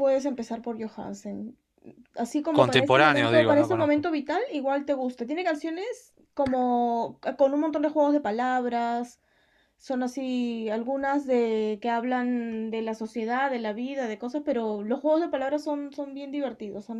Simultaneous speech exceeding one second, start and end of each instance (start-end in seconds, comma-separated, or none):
2.5-4.1